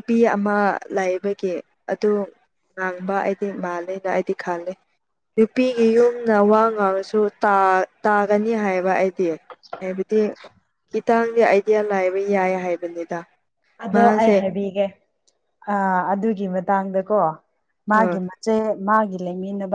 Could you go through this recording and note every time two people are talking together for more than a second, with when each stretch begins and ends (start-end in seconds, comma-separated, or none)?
none